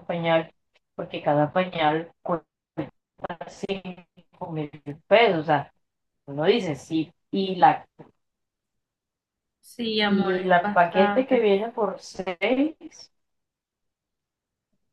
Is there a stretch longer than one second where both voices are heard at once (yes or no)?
yes